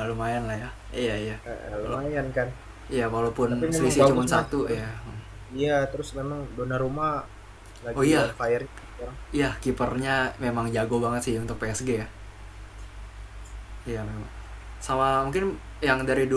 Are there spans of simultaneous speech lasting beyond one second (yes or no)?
yes